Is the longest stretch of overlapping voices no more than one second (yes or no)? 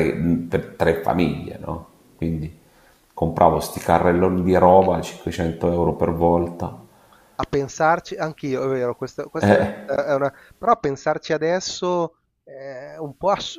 yes